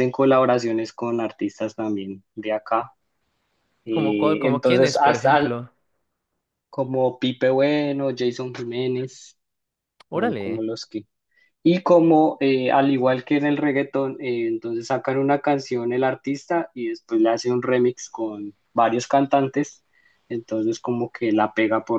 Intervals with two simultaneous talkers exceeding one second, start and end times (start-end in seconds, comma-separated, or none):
3.9-5.5